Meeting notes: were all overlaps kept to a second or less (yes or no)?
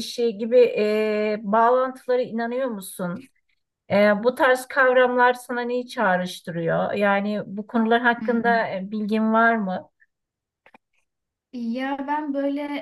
yes